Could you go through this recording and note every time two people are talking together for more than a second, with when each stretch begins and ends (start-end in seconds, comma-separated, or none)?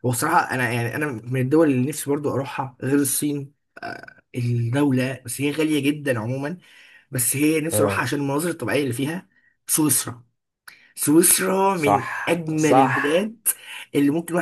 11.7-13.3